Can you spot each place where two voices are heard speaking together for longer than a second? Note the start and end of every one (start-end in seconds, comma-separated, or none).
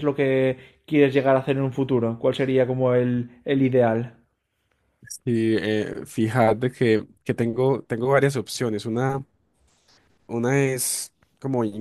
none